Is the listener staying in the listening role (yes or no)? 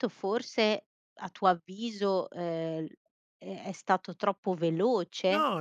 no